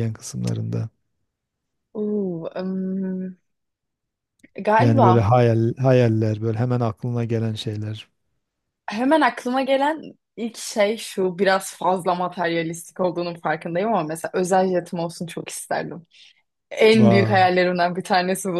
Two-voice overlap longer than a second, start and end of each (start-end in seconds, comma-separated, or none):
none